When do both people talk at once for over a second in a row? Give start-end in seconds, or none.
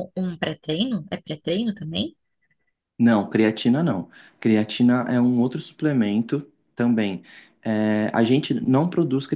none